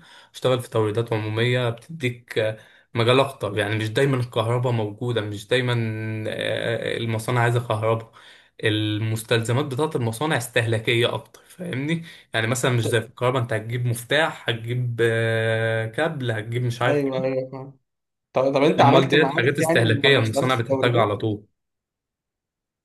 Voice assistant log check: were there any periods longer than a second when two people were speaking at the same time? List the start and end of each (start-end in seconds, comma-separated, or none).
18.8-21.1